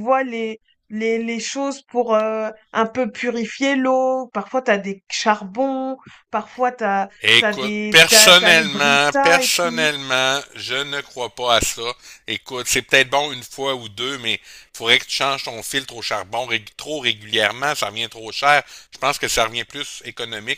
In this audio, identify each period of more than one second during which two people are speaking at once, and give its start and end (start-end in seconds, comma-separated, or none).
7.3-9.9